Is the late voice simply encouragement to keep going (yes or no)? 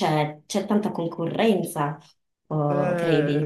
no